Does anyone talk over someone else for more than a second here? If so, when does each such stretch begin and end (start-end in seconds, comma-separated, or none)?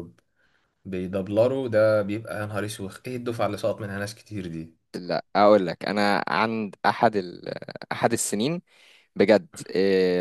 none